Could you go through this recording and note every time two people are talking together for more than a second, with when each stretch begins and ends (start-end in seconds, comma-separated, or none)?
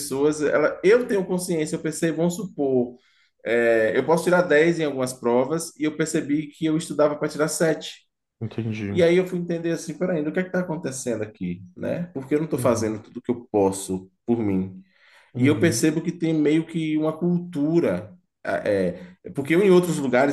none